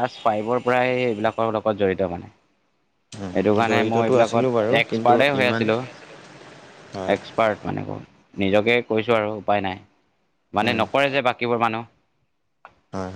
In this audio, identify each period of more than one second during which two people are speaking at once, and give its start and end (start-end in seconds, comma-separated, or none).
3.7-5.6